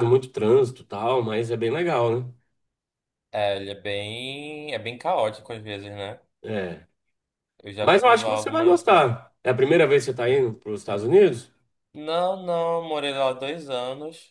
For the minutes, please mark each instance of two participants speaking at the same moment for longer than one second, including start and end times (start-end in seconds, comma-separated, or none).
7.8-9.1